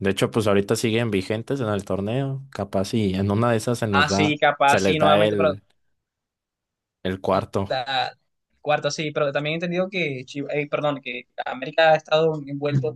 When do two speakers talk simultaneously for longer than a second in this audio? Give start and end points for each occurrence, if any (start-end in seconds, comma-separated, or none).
3.9-5.5